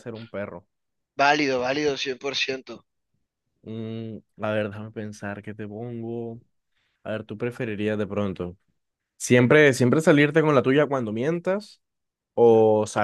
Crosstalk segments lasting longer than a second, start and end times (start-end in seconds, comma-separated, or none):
none